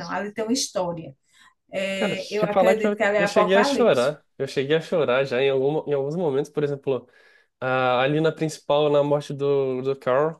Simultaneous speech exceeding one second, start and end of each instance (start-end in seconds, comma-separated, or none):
1.9-4.1